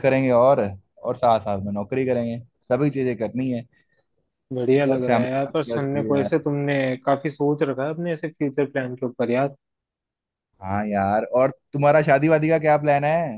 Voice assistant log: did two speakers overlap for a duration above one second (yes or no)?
yes